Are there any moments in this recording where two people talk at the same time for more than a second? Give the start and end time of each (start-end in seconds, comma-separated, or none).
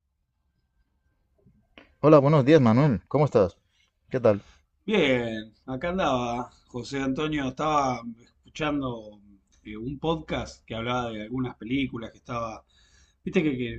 none